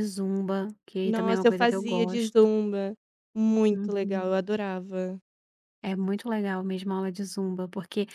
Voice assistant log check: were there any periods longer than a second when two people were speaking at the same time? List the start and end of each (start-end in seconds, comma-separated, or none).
1.0-2.5